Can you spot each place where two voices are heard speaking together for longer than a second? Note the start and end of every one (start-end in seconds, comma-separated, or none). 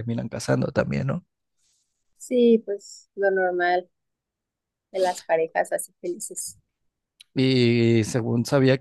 none